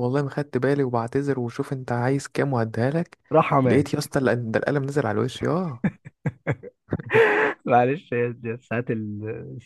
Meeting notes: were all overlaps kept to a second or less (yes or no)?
yes